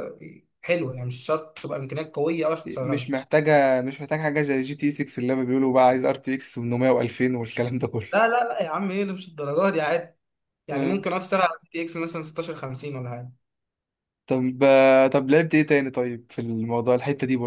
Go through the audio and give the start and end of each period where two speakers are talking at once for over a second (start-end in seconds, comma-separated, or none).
none